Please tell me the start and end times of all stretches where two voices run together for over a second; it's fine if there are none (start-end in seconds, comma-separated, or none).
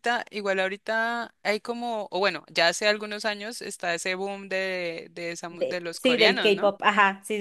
5.5-6.7